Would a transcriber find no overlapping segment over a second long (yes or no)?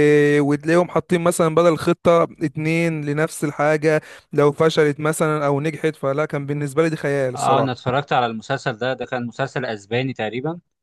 yes